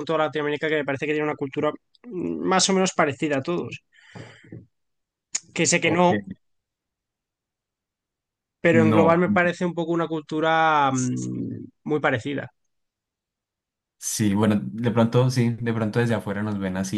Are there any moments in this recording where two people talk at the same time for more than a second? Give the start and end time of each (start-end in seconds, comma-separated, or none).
none